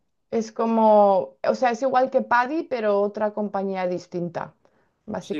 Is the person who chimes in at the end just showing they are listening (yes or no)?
no